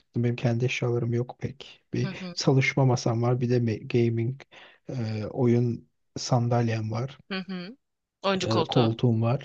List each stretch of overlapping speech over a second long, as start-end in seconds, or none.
none